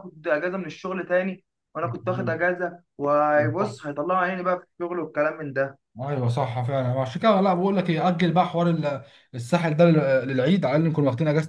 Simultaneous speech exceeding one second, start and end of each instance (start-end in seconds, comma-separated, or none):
none